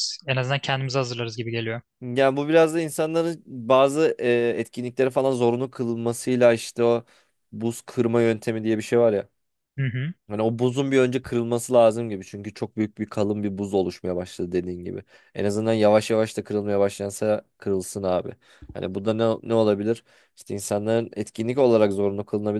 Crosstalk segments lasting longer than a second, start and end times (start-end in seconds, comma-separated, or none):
none